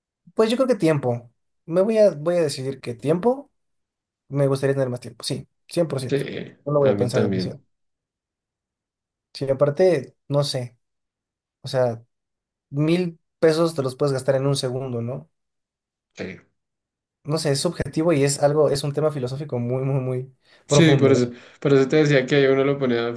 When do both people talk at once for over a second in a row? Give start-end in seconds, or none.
6.1-7.6